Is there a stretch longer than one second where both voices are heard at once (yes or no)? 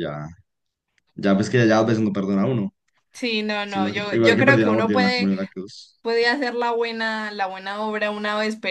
yes